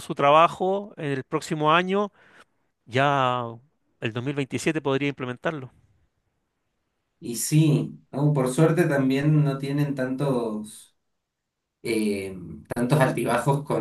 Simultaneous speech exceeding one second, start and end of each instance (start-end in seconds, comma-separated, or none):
none